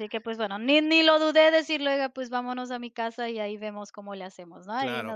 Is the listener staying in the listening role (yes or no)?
no